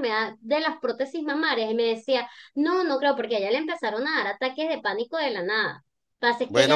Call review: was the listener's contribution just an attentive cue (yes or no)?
yes